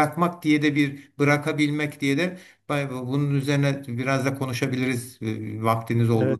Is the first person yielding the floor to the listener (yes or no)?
yes